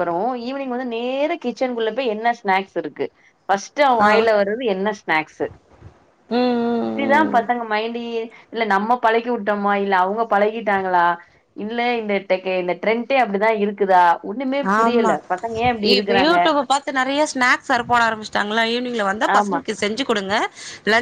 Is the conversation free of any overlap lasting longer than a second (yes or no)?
yes